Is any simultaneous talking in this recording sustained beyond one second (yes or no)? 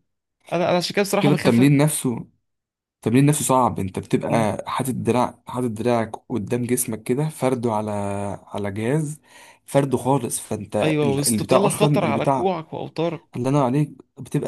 yes